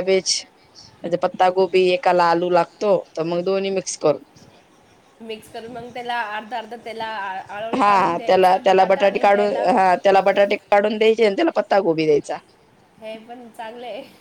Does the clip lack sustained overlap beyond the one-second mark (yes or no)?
no